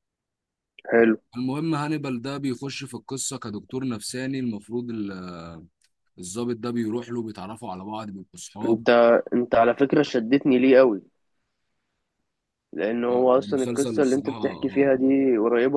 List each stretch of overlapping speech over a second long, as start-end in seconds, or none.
13.3-14.9